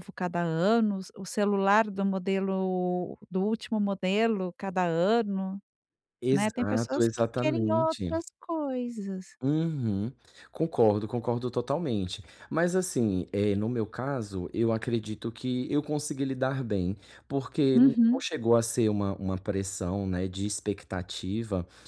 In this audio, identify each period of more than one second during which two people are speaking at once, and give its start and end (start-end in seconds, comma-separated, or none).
6.3-8.2